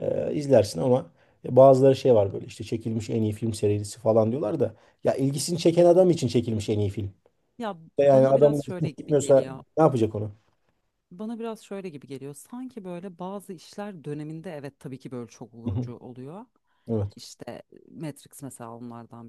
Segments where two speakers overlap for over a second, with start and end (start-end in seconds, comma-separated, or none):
8.0-9.6